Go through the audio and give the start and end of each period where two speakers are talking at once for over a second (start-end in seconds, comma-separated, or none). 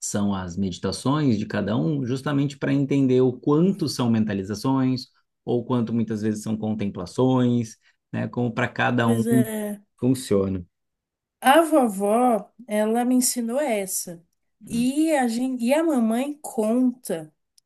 none